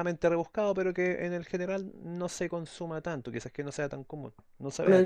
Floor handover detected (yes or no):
yes